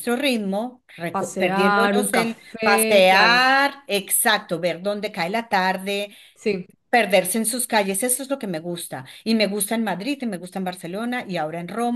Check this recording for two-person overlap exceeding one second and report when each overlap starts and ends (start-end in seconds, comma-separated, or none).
1.1-3.4